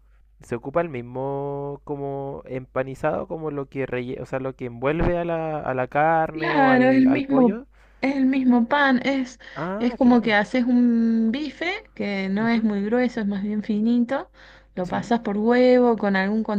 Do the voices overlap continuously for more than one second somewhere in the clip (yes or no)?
yes